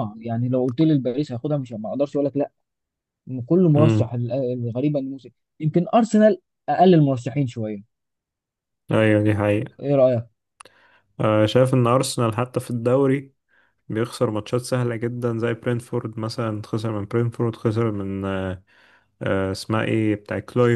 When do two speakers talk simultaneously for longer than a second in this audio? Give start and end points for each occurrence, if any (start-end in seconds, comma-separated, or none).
none